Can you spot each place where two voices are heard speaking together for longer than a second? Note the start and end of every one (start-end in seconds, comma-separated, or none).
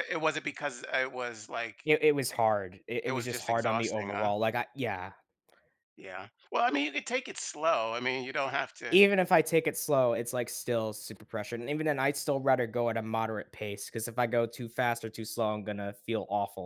3.0-4.3